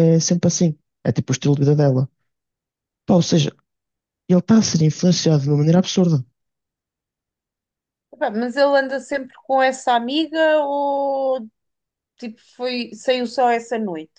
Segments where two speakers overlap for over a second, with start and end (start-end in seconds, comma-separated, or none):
none